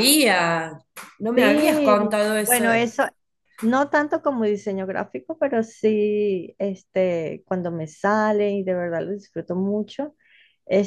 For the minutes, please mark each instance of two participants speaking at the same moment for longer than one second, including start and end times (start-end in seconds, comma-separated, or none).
1.3-2.6